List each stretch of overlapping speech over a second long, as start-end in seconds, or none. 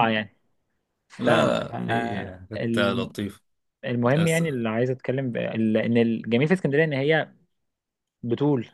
1.2-3.1